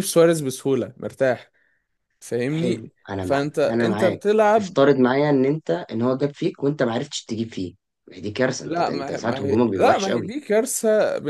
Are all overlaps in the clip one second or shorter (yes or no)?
no